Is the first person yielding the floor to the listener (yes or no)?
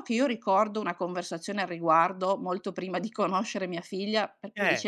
no